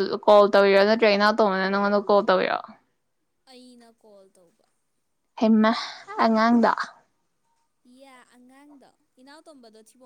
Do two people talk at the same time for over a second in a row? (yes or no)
no